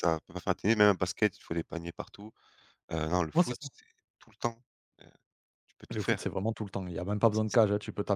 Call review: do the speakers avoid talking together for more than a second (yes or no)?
yes